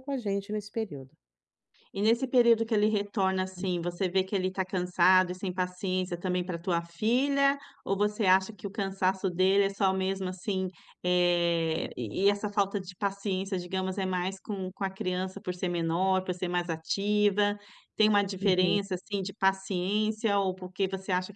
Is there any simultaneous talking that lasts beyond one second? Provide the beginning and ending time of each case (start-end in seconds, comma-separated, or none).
none